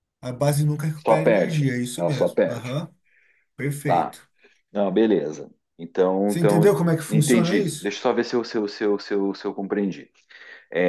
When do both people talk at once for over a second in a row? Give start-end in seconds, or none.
1.1-2.8, 6.3-7.9